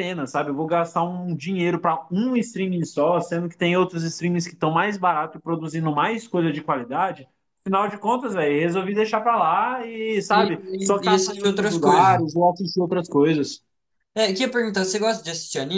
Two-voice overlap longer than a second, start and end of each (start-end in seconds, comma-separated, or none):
10.3-12.2